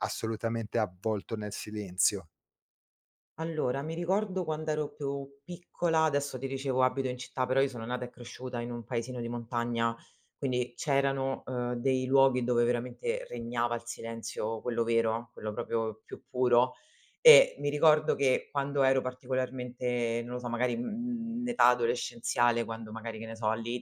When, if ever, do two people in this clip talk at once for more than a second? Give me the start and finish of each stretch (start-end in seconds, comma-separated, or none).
none